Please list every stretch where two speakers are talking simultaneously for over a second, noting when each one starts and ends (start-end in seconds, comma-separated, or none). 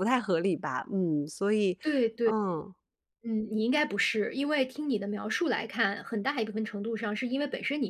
none